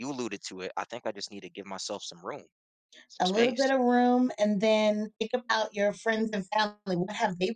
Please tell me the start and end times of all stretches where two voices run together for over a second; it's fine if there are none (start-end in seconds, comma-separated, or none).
none